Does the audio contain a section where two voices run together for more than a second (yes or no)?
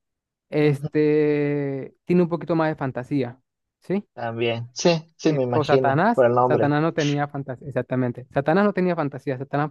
yes